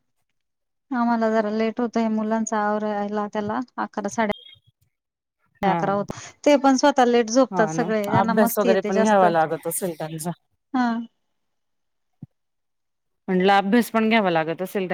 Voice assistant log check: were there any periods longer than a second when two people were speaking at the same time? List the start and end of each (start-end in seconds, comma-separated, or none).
7.5-9.2